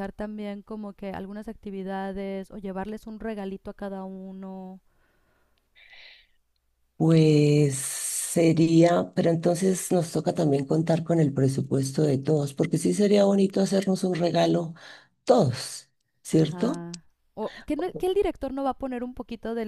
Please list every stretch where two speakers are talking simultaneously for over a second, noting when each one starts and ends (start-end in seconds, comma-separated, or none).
none